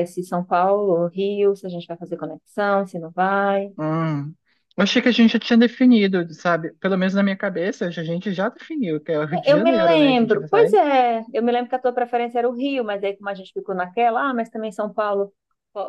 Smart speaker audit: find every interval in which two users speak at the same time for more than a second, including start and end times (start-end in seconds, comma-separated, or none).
9.3-10.8